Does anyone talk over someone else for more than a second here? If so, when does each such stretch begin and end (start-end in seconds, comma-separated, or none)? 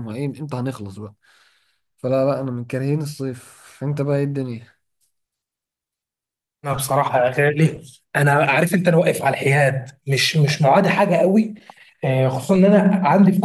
none